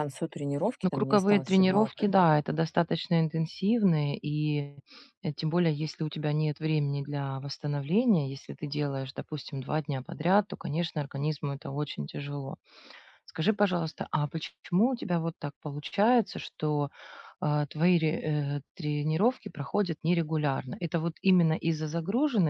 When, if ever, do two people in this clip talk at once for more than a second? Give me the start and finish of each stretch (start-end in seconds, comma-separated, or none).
0.8-2.1